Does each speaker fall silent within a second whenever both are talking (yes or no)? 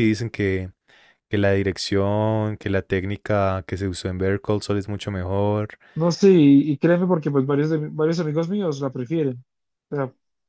yes